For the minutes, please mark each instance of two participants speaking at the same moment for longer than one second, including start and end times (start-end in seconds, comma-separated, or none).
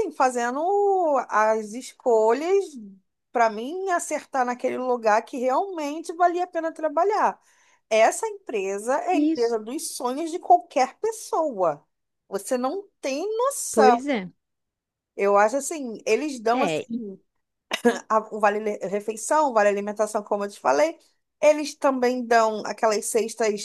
none